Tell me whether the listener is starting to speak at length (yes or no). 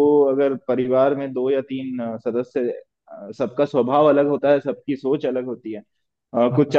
no